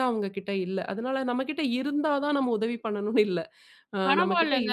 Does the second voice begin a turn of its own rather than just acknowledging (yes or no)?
yes